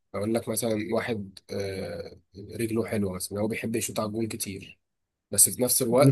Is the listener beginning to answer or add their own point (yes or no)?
no